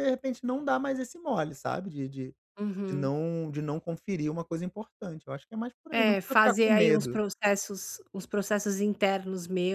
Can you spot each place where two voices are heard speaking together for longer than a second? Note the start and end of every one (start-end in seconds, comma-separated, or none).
5.9-7.2